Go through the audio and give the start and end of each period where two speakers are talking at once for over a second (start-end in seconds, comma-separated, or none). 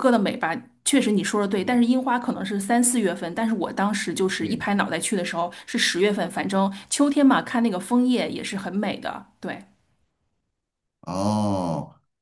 none